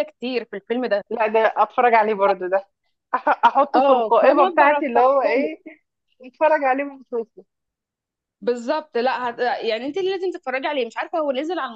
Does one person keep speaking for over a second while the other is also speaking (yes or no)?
yes